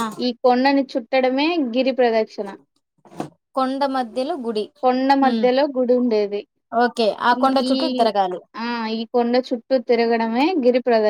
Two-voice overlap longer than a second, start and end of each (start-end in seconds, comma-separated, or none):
none